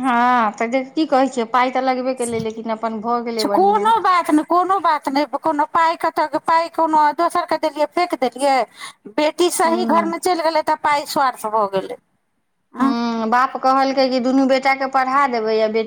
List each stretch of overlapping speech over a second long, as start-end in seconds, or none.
none